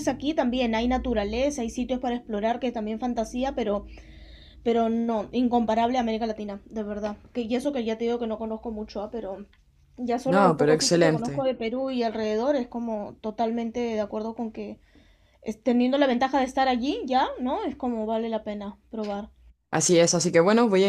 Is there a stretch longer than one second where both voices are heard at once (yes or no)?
yes